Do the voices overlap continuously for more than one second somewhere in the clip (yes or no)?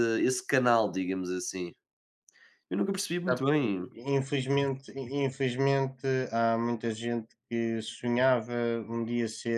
no